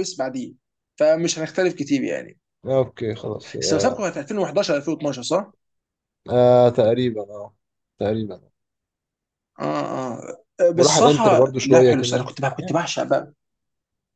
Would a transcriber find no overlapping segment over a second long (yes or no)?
no